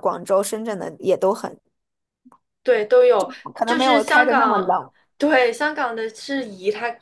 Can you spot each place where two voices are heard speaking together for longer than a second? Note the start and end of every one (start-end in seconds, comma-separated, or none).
3.5-4.8